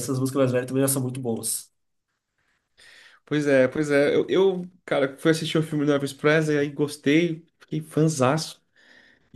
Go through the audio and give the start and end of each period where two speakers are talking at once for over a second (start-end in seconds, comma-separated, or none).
none